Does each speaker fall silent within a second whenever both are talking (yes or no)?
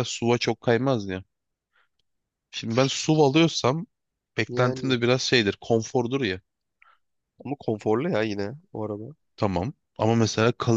yes